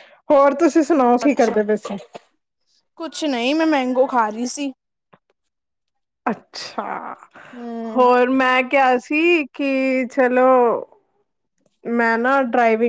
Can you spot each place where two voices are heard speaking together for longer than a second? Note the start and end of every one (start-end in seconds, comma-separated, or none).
none